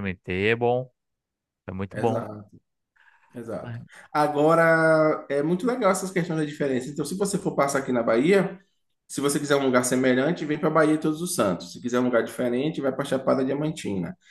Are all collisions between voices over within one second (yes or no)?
yes